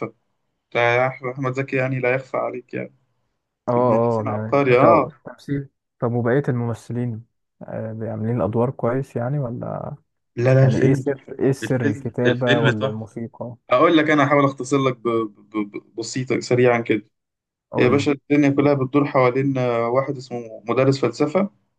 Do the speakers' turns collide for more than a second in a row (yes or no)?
yes